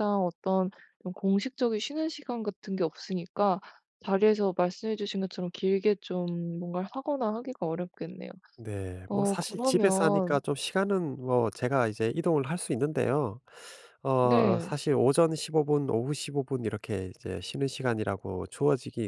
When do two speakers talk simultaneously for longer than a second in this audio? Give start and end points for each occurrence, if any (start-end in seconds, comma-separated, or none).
9.1-10.4